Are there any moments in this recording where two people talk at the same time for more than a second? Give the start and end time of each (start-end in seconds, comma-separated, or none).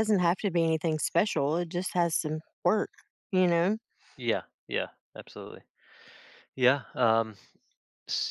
none